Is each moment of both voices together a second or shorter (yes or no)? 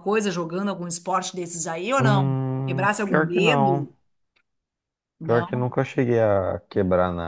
no